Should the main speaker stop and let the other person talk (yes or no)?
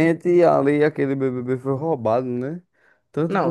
yes